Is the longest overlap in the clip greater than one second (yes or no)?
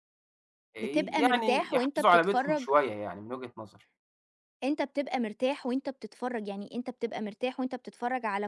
yes